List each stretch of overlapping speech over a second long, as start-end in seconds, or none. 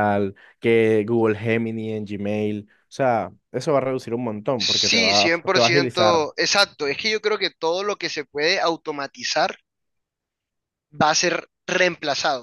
4.6-6.3